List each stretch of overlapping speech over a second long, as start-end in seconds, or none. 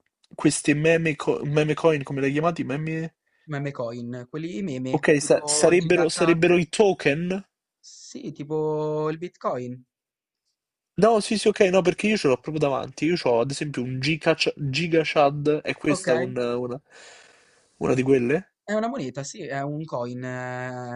5.0-6.4